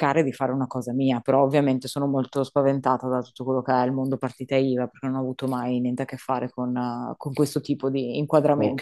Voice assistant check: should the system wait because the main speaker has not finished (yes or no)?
no